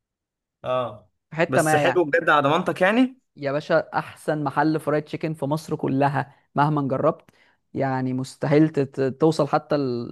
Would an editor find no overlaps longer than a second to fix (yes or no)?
yes